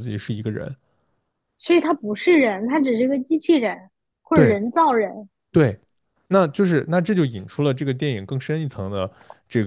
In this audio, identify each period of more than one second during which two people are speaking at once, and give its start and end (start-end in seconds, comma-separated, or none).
none